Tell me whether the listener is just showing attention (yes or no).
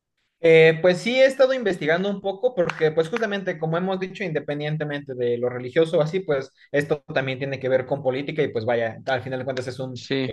yes